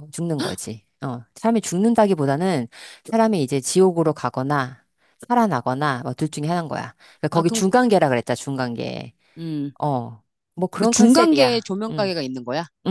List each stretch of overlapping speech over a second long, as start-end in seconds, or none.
10.8-12.1